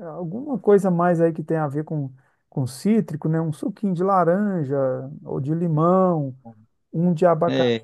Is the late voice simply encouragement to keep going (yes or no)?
yes